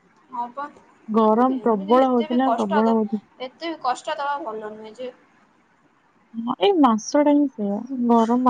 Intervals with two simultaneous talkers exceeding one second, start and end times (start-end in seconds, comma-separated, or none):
1.4-3.0